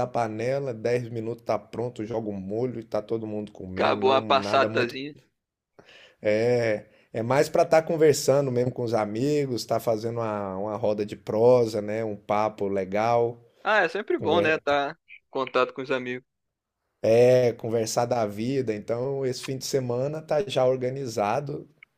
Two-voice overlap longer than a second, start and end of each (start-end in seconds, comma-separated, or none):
3.7-5.0